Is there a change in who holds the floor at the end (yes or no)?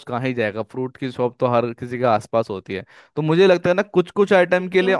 no